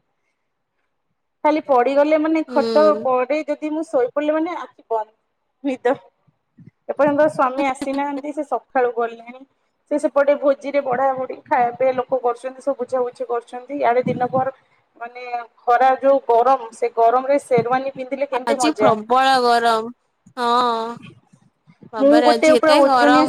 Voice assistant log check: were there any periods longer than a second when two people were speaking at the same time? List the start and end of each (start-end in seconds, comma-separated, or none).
none